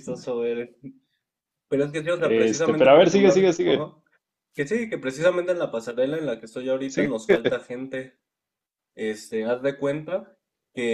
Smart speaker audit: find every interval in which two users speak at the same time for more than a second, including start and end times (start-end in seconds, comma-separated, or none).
2.2-3.9